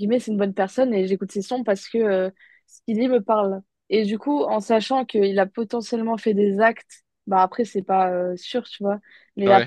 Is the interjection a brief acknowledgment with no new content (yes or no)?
yes